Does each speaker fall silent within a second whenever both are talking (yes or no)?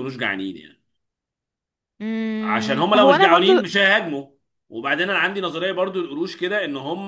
no